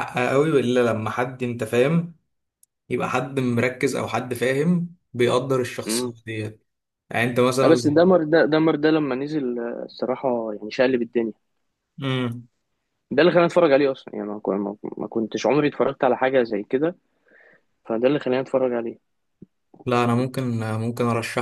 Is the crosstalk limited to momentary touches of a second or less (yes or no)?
yes